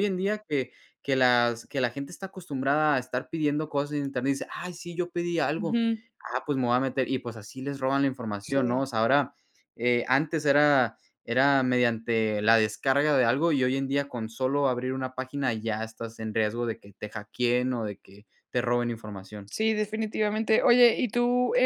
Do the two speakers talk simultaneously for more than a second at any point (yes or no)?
no